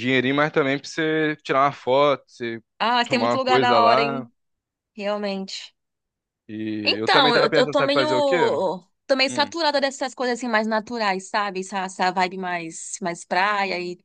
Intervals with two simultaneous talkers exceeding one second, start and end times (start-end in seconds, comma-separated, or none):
3.0-4.3, 6.8-8.1